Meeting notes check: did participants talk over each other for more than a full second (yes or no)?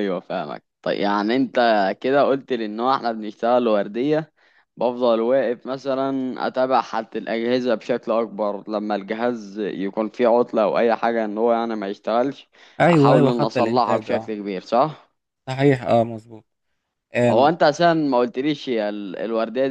yes